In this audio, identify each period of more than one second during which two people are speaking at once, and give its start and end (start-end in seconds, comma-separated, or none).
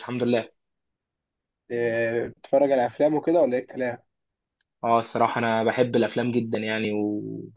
none